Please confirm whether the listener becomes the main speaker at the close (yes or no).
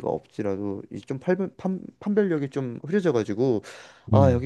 no